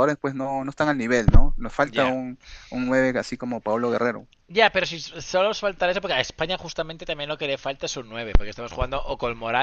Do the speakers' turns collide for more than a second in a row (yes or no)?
no